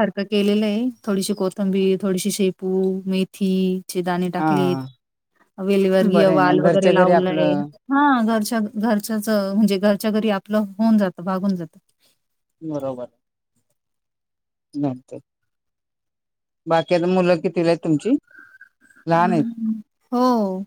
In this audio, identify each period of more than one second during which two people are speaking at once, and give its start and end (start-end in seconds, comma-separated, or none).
6.1-7.5